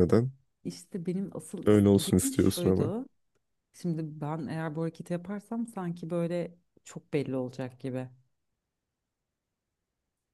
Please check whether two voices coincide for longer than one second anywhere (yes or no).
yes